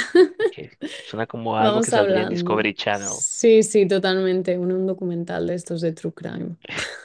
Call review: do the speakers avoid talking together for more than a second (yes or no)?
no